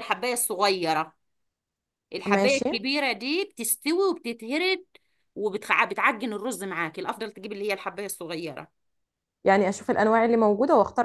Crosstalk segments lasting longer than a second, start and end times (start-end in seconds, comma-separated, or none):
none